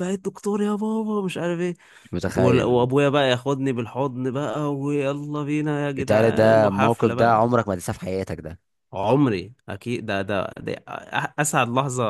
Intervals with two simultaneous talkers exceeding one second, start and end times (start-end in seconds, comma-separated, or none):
6.0-7.4